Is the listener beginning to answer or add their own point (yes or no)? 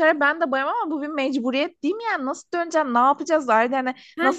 no